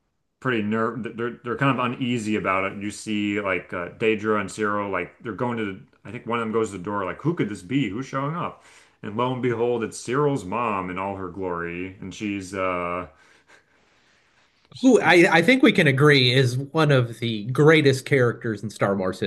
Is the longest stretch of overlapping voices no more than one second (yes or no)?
yes